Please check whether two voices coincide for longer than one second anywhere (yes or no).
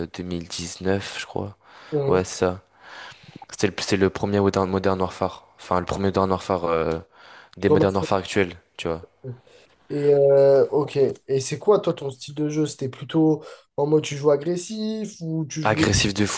no